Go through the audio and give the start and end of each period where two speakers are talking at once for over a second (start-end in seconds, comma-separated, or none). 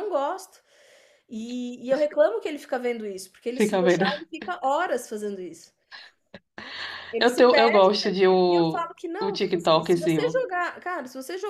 7.2-10.4